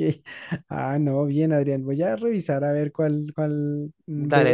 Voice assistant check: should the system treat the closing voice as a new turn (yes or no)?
no